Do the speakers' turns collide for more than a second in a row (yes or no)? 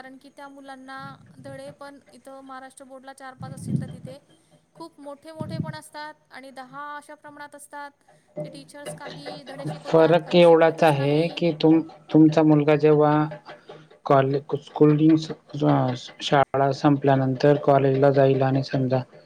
yes